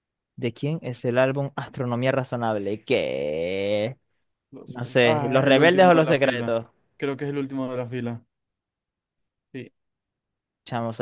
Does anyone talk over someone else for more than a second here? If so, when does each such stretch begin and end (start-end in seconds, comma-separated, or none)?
4.7-6.5